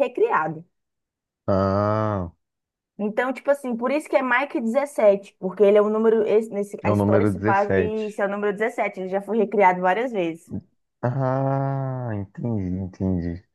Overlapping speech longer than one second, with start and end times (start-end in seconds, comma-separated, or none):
6.8-8.2